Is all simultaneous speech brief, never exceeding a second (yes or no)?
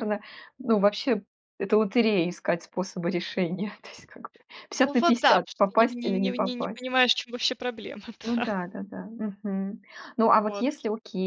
no